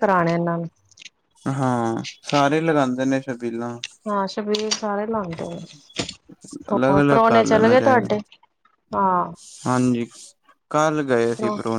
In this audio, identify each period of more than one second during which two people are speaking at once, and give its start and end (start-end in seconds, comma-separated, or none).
6.7-8.2